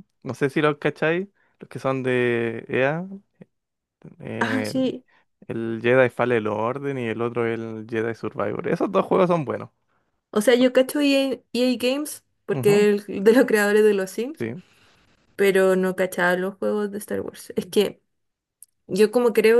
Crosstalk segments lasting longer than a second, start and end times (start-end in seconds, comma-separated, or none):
none